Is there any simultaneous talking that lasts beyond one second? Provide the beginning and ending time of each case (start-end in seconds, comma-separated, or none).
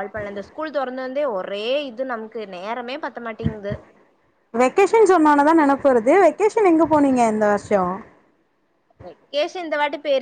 none